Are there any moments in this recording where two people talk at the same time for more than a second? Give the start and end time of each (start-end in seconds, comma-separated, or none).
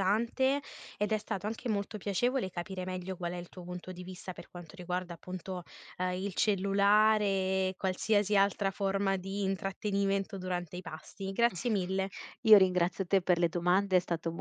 none